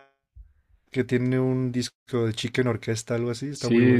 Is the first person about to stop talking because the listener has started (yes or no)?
yes